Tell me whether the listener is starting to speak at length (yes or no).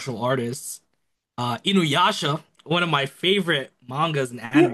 yes